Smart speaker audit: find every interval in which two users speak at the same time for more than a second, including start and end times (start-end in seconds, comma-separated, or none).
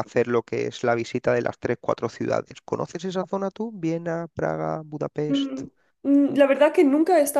none